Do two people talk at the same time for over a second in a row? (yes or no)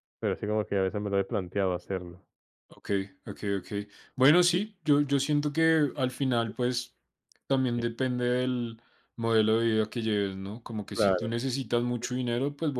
no